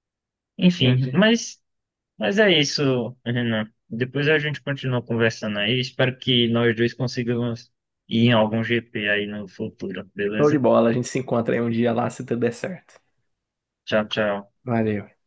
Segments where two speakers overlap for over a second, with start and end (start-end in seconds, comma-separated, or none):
none